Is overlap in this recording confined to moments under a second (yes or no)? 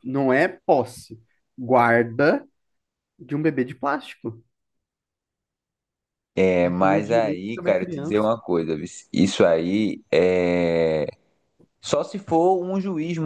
no